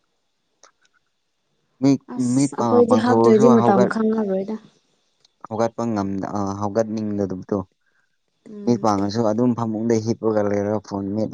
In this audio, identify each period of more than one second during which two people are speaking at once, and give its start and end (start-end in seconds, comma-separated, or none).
2.1-3.9